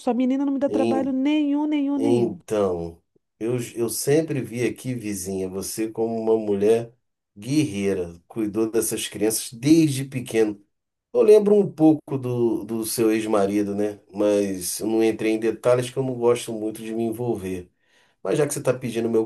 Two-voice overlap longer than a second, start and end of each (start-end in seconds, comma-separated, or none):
none